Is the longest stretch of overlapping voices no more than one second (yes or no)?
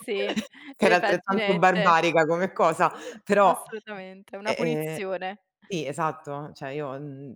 no